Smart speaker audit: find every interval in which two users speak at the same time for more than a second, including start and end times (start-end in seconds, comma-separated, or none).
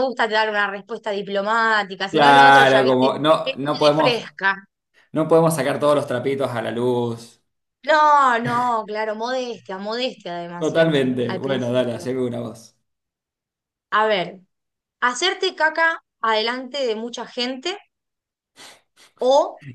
2.1-4.2, 10.6-12.1